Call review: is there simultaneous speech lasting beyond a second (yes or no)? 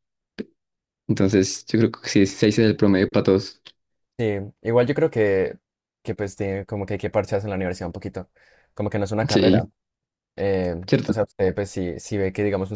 no